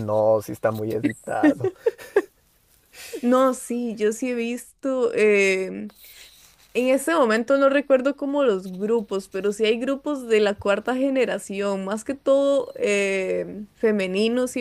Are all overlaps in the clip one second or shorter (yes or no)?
yes